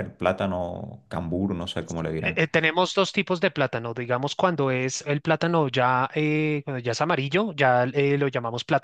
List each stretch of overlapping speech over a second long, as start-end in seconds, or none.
none